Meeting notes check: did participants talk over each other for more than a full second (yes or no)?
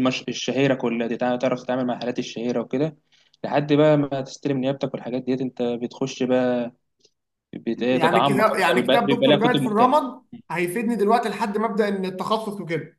yes